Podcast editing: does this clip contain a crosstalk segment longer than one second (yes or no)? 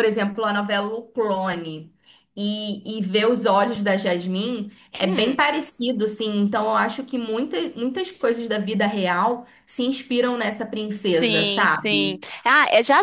yes